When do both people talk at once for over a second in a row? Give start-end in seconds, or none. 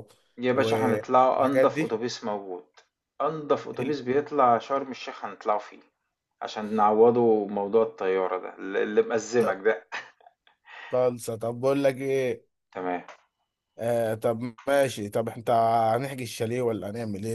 0.5-2.0